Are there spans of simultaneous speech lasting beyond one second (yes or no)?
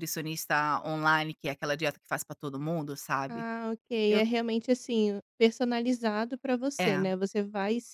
no